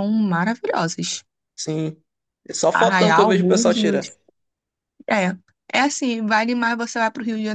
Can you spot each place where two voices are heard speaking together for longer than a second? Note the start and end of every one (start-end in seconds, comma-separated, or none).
2.7-4.0